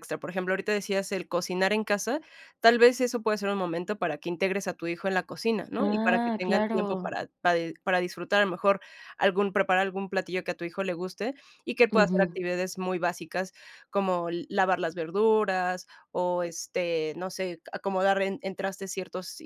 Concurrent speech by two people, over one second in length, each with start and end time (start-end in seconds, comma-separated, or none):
5.8-7.1